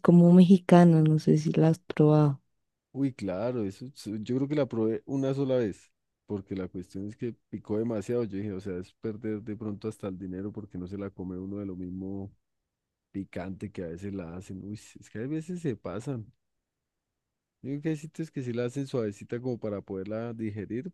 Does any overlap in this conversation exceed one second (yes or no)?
no